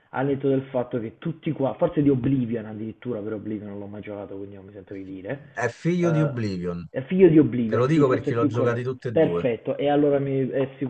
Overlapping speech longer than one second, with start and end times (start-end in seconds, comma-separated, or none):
7.7-9.5